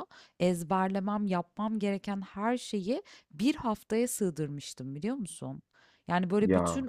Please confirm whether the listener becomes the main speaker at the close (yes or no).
no